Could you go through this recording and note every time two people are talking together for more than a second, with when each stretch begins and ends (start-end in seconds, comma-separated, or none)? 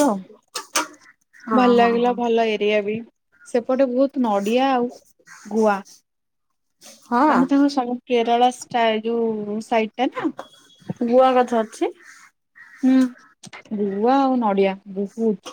none